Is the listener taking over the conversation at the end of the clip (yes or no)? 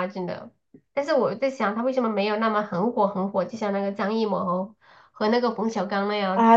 yes